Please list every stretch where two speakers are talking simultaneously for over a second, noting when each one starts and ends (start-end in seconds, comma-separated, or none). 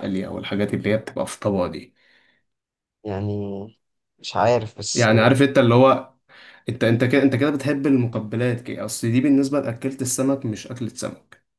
none